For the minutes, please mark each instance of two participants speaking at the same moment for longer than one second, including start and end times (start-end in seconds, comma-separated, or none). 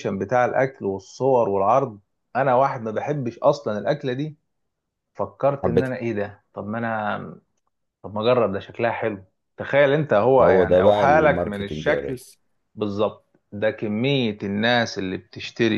10.4-12.2